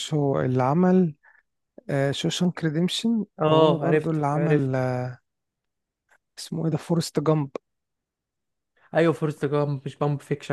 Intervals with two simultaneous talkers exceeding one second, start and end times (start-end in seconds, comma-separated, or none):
3.4-4.8